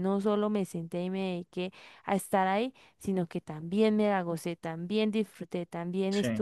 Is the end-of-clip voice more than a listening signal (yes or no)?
no